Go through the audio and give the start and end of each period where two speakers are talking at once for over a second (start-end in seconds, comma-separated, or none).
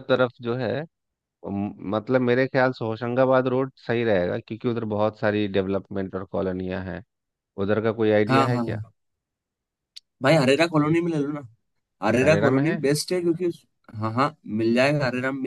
none